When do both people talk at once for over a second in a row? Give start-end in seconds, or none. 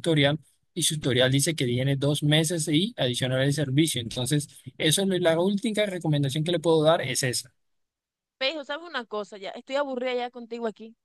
none